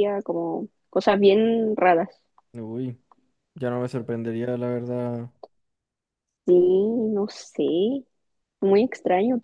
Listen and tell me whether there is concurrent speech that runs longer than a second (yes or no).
no